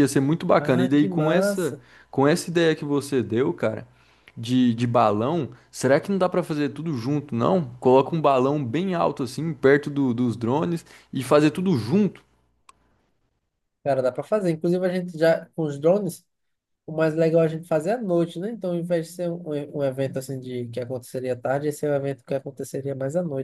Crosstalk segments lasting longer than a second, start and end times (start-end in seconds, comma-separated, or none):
0.6-1.8